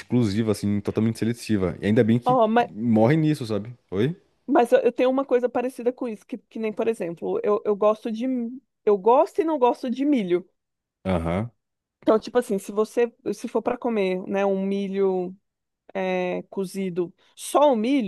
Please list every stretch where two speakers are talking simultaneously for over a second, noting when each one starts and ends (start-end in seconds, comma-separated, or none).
none